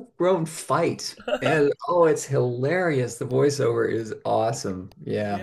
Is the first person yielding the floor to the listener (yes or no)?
yes